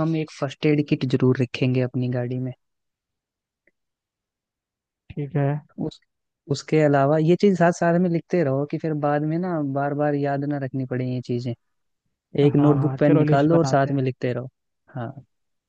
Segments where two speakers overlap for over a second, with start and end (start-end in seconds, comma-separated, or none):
12.5-14.0